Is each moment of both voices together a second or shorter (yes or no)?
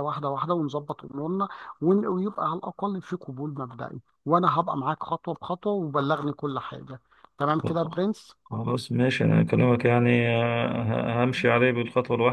yes